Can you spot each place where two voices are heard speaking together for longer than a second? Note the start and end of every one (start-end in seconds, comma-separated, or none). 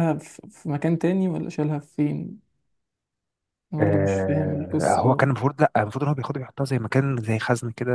3.8-5.3